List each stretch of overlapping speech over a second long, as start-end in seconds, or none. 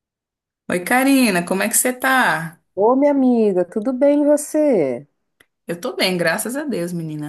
none